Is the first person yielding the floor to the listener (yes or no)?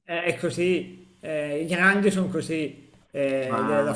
no